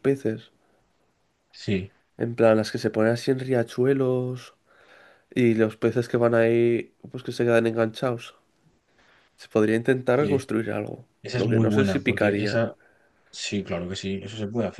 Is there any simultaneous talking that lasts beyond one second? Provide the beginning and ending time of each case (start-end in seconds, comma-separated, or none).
11.2-12.6